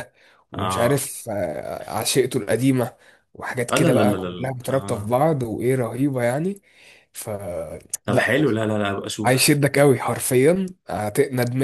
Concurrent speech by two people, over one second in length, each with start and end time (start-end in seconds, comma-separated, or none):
3.7-5.1